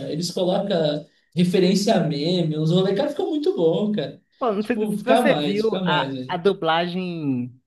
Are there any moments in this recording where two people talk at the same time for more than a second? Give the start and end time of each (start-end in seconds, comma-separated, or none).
4.6-6.4